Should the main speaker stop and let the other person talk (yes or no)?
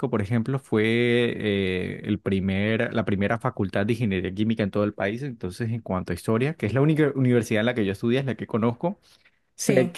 no